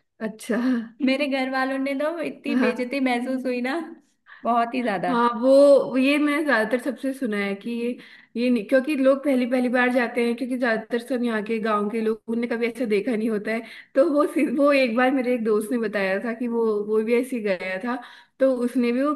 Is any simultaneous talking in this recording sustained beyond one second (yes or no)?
no